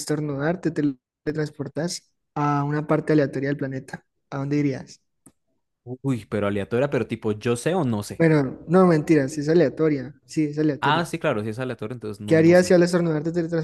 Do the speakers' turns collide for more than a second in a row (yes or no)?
no